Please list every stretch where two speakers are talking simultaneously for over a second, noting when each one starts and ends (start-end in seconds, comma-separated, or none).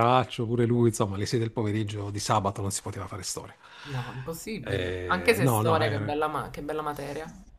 4.6-6.2